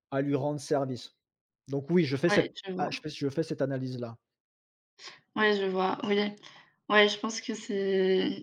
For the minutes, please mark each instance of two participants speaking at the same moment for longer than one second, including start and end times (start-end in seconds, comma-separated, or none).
none